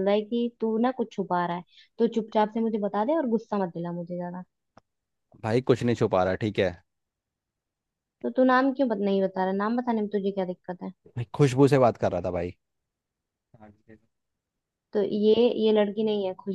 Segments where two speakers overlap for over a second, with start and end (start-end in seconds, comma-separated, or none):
none